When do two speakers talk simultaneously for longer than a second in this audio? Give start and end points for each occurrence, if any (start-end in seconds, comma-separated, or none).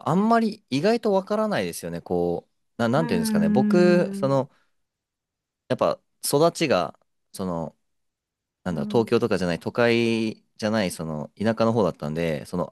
3.0-4.4